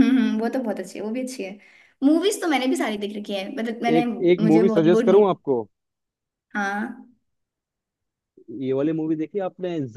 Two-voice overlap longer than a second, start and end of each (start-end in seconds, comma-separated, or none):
4.0-5.4